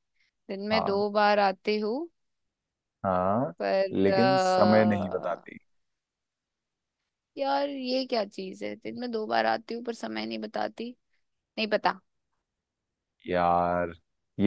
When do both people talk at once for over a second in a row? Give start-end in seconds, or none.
3.9-5.5